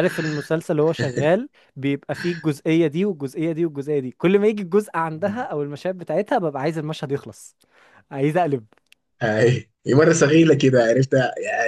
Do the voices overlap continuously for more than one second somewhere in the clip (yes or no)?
no